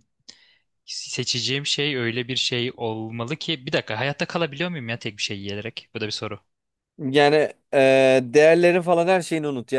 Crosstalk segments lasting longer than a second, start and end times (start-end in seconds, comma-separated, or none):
none